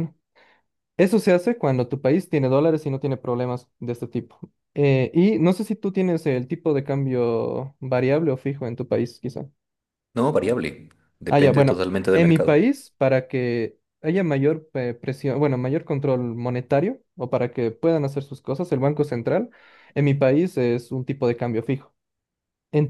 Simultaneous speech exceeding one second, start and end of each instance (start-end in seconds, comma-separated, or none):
11.3-12.7